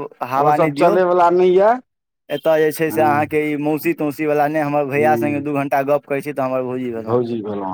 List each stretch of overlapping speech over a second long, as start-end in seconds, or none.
none